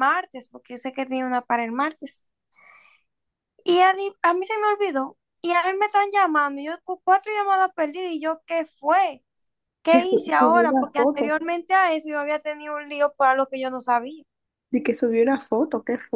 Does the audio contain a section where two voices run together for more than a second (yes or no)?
yes